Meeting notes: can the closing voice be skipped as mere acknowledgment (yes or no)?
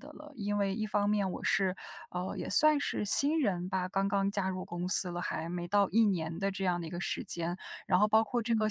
yes